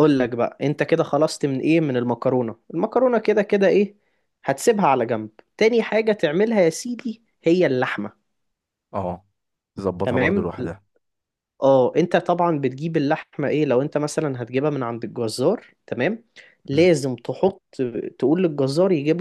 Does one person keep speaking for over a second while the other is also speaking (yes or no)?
no